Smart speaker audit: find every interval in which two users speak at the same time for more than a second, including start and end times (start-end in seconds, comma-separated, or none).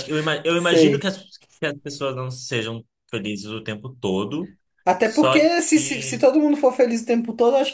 5.0-6.2